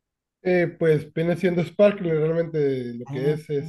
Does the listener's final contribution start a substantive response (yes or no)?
no